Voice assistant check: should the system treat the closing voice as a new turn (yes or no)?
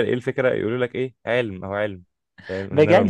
yes